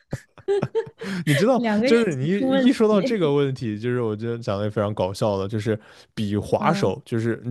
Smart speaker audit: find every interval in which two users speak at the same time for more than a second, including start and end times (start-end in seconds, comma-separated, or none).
1.6-3.3